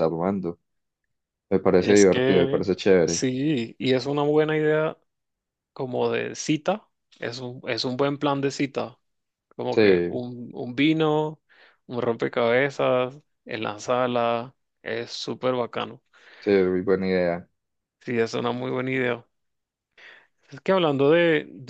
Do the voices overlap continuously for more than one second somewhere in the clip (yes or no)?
yes